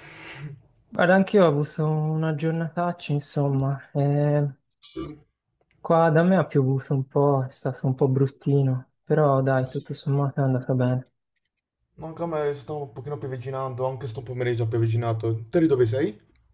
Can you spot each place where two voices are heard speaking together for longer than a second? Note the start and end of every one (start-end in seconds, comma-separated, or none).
none